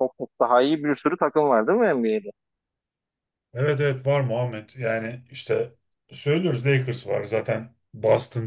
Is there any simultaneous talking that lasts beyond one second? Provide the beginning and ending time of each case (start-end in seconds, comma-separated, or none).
none